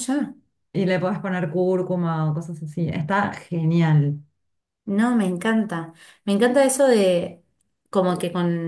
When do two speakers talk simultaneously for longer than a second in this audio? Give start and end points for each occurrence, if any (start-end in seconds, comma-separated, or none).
none